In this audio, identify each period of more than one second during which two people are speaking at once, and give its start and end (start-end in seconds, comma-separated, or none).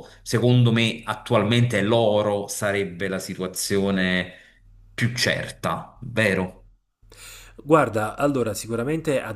none